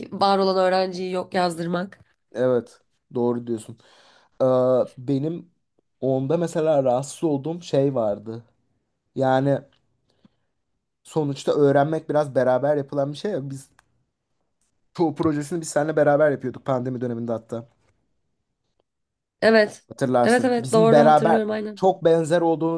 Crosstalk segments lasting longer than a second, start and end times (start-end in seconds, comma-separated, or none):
20.2-21.8